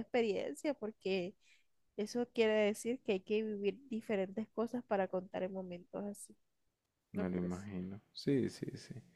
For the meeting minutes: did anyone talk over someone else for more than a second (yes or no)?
no